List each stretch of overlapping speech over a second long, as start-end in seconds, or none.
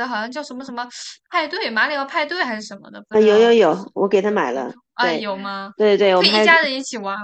3.1-5.3